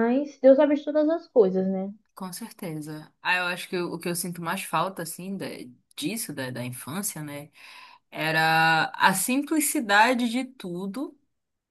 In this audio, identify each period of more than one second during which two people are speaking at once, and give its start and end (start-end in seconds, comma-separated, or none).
none